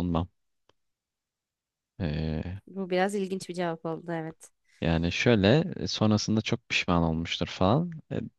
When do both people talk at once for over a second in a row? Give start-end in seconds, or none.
none